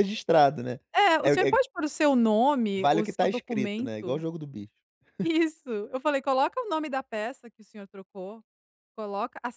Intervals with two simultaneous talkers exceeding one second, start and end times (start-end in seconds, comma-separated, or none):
2.7-4.2